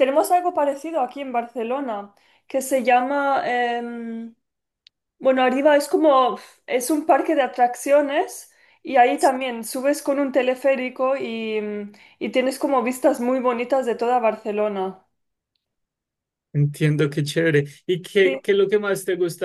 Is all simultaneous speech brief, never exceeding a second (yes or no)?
yes